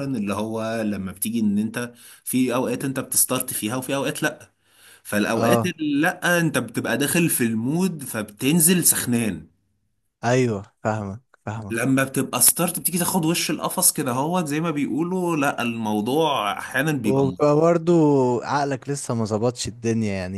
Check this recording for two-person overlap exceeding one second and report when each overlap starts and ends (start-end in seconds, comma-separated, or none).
none